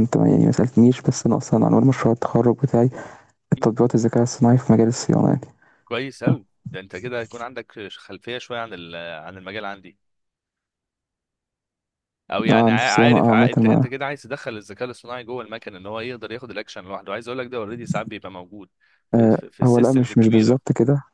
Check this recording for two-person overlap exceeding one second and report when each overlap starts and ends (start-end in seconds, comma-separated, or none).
12.5-13.9, 19.1-20.6